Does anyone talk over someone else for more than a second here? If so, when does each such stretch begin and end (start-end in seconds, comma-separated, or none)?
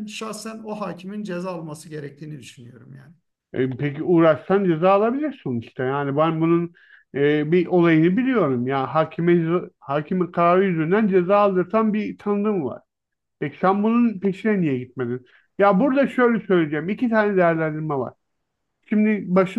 none